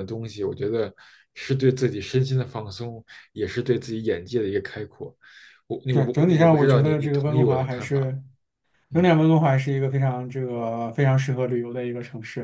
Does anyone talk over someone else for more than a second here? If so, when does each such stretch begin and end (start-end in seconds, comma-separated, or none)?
5.9-8.1